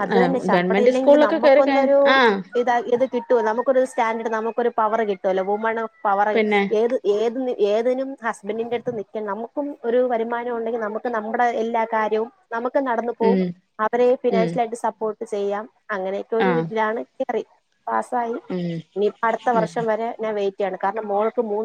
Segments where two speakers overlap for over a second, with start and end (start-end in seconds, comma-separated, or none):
0.5-2.0